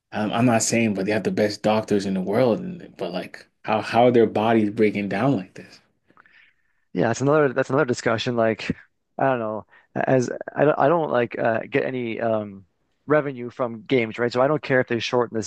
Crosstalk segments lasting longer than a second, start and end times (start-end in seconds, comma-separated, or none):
none